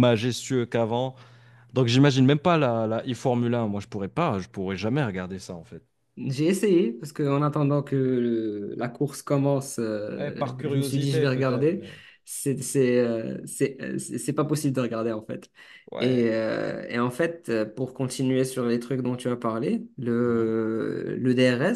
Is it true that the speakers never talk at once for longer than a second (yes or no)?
no